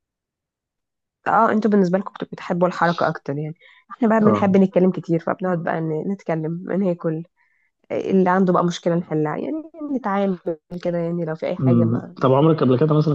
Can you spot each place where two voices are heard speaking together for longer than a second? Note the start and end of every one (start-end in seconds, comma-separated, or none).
none